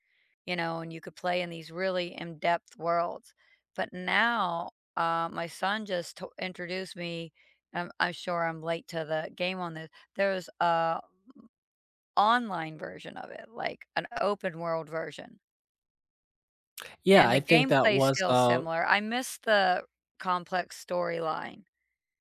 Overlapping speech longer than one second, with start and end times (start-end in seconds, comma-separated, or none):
17.1-18.6